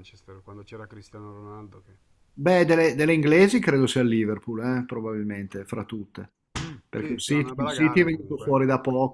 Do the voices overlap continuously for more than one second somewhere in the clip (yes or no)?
yes